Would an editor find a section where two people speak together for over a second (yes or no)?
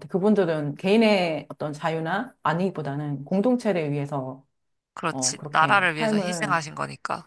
yes